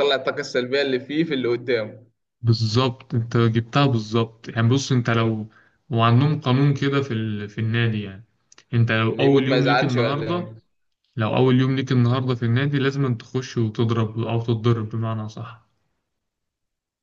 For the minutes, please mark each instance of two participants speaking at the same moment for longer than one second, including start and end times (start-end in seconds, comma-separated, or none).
9.1-10.5